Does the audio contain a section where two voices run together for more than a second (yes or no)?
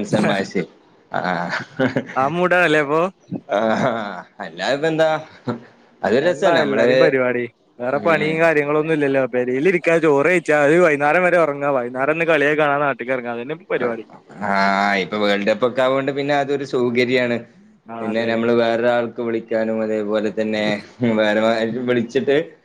no